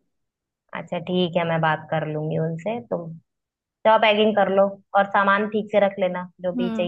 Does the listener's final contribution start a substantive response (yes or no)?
yes